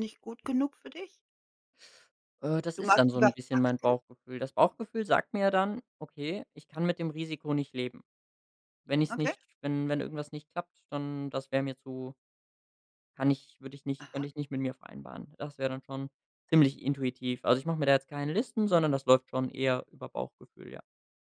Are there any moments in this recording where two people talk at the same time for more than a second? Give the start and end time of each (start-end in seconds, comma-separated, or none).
2.8-4.0